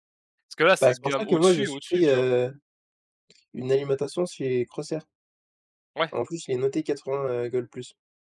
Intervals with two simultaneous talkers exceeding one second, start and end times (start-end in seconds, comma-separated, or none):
0.8-2.3